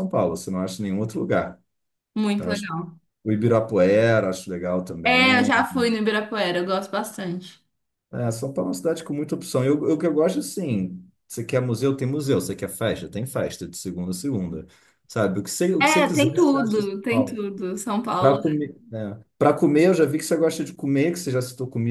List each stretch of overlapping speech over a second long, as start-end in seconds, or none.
15.8-17.5